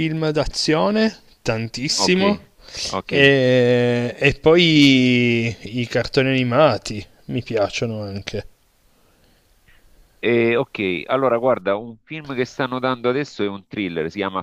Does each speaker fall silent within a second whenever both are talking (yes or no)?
yes